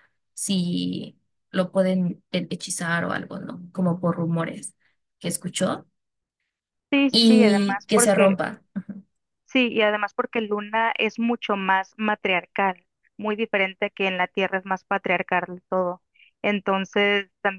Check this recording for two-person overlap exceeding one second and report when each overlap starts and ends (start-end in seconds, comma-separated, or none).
7.1-8.4